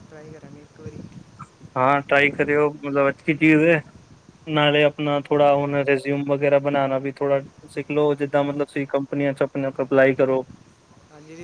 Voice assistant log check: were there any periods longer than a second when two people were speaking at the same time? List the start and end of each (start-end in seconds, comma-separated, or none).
none